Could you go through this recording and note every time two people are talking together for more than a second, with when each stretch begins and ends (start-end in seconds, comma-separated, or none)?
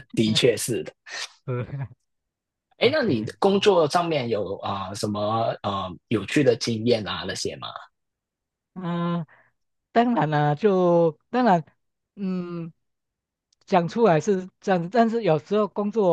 none